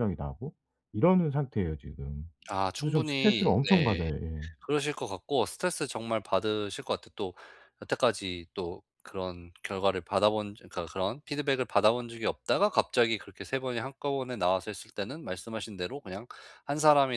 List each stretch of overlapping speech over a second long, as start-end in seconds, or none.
2.8-4.1